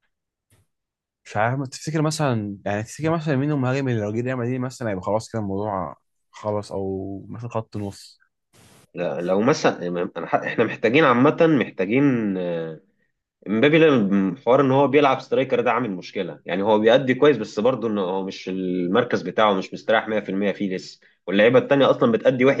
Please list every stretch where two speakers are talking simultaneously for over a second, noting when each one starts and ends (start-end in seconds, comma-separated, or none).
none